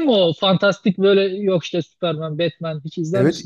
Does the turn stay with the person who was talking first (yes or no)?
no